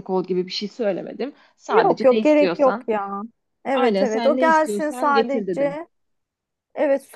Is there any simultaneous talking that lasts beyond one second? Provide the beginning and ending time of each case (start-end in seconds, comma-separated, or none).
1.7-2.9, 3.7-5.8